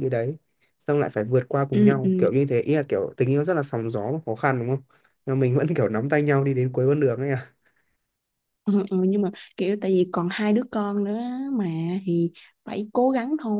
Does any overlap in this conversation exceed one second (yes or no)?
no